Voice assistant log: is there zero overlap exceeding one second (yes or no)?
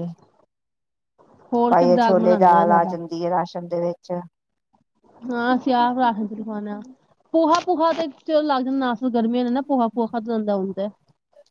no